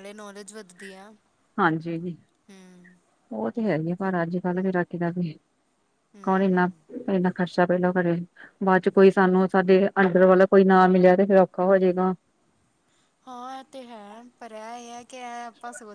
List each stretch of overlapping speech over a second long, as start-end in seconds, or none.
none